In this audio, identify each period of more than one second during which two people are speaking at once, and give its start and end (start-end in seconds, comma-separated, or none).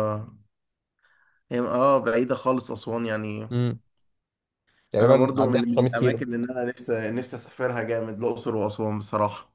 5.0-6.3